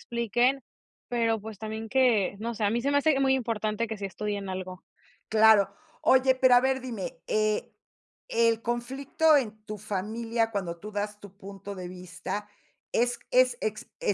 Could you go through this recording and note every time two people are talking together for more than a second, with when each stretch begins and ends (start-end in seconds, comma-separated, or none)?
none